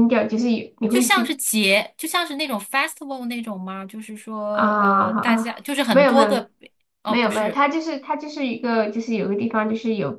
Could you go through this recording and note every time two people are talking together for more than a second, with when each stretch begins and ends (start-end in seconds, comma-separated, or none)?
4.5-6.4